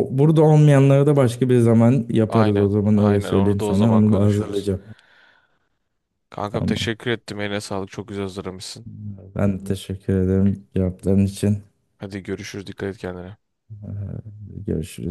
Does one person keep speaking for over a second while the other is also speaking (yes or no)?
yes